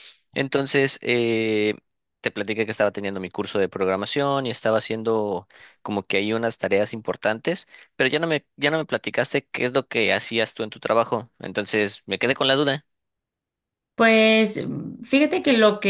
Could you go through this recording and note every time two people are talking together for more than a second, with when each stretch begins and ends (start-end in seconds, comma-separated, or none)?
none